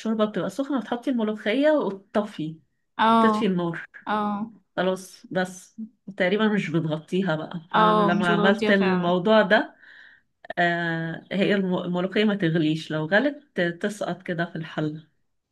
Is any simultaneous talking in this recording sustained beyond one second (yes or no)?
yes